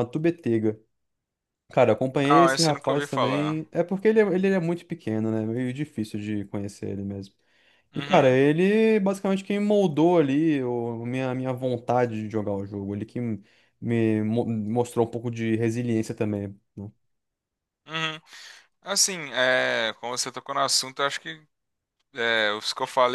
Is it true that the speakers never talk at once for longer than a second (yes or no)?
no